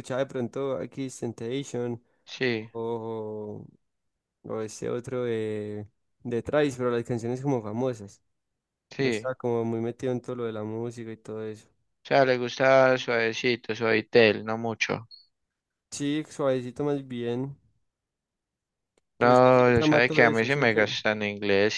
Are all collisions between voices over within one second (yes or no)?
no